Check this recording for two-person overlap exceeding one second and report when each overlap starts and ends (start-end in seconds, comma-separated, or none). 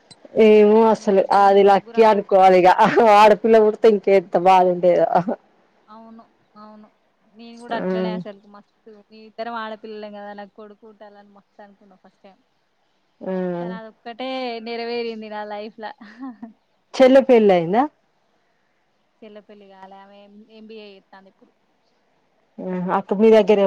0.8-2.7